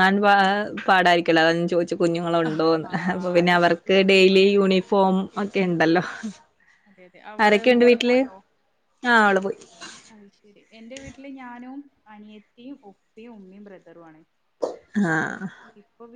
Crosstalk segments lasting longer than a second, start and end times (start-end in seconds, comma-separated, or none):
2.5-4.2